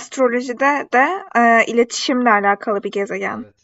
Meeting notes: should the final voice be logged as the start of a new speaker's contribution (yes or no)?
yes